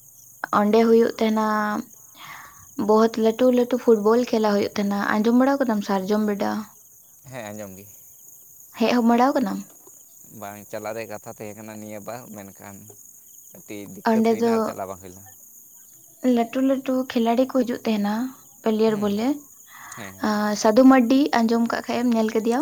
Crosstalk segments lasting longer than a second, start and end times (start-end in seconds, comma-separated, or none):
none